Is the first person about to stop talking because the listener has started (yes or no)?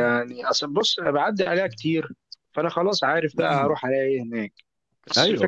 no